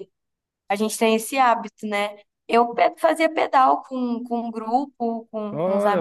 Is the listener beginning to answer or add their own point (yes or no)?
yes